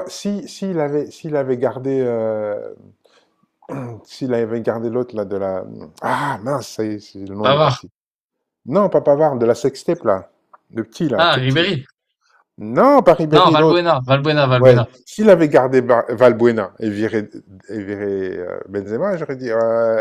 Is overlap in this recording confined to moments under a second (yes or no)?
yes